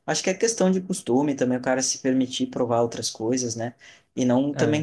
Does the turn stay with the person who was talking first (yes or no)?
yes